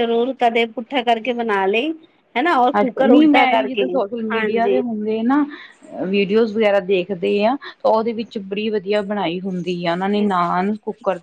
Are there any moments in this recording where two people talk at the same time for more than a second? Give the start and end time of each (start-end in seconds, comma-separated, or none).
2.8-4.8